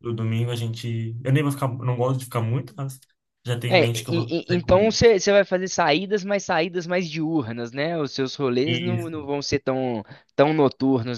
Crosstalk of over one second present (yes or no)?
yes